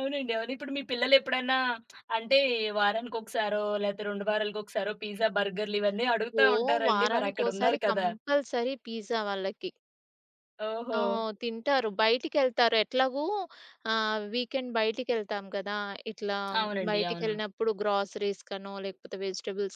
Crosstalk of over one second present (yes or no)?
yes